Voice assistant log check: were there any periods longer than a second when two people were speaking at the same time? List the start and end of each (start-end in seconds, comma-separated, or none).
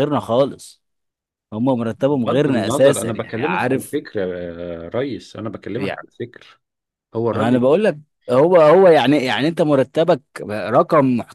2.1-4.0